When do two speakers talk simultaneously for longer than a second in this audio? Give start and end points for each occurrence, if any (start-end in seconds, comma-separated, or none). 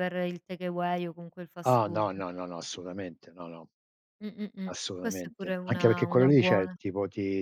4.6-6.8